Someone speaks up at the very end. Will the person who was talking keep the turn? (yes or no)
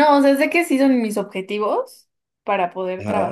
yes